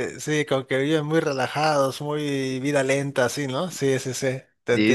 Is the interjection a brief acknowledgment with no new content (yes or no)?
no